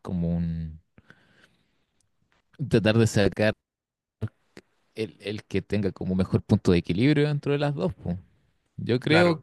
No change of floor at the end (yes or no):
no